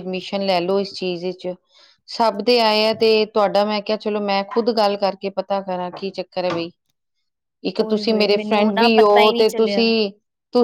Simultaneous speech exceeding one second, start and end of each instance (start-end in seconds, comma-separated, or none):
7.8-9.8